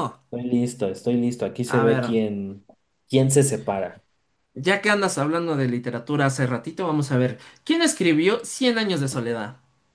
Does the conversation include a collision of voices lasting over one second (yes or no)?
no